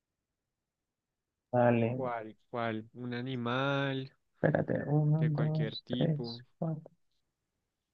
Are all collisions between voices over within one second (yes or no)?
no